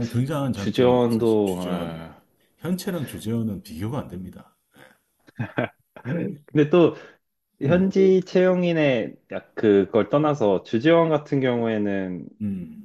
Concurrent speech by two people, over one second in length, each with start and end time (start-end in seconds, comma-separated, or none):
0.5-2.0